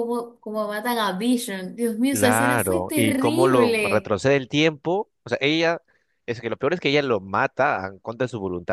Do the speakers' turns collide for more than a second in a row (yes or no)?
yes